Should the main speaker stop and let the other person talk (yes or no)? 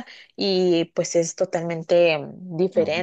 no